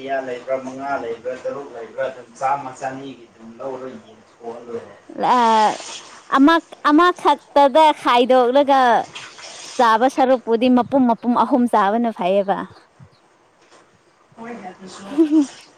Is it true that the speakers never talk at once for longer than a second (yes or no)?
yes